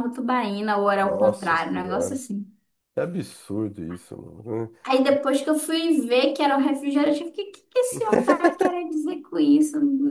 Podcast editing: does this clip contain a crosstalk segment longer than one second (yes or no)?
yes